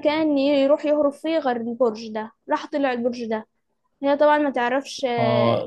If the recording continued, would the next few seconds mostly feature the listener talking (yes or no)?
yes